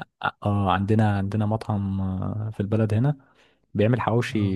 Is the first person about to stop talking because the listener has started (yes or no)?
no